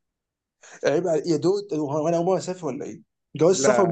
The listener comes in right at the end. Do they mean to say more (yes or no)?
no